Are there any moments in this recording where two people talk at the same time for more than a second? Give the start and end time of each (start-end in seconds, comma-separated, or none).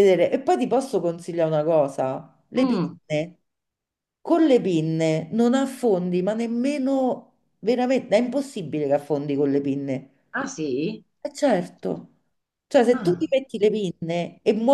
none